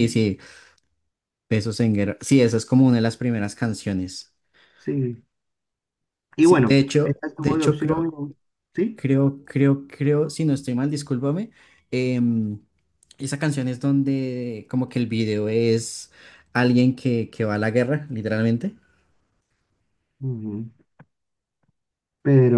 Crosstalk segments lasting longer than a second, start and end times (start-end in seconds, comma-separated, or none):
6.4-8.1